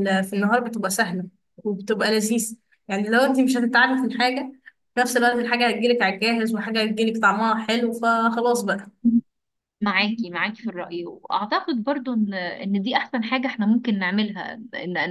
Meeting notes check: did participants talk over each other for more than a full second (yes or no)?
no